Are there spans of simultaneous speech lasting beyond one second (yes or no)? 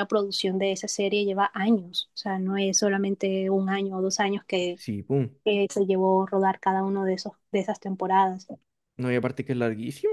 no